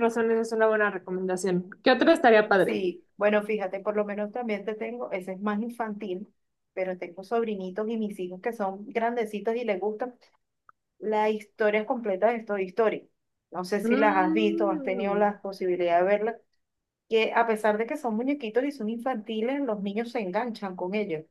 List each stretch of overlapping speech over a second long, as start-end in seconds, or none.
13.8-15.3